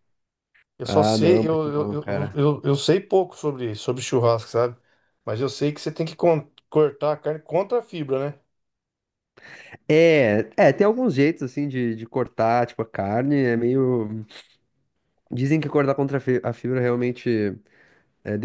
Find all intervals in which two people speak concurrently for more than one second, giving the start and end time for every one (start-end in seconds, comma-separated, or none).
0.8-2.4